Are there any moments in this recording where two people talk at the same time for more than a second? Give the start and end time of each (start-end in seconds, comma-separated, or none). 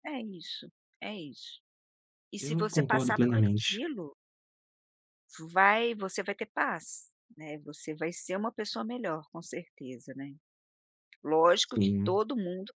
2.4-3.8